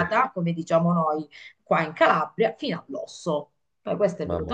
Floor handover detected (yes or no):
no